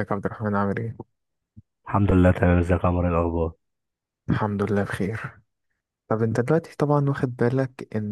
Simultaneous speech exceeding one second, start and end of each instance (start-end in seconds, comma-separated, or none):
none